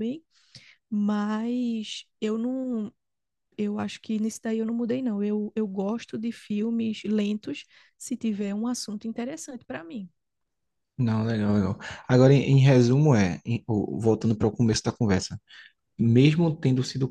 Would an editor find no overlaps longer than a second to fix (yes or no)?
yes